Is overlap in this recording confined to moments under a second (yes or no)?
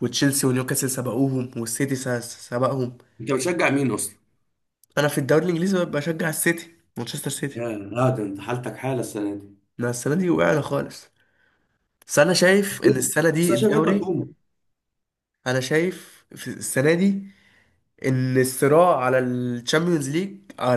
no